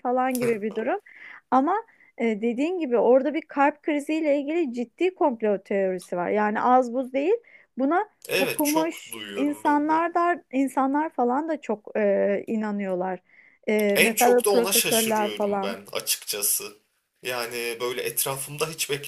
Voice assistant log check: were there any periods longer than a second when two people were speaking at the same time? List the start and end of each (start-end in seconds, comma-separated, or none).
8.3-10.0, 13.9-15.8